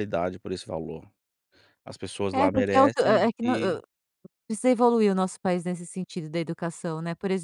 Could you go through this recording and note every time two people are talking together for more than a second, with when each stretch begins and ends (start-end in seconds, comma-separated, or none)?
2.3-3.8